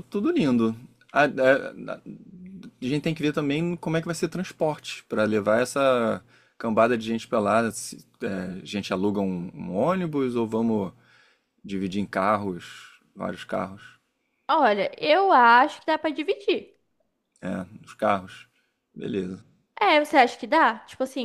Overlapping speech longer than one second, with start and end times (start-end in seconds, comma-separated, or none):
none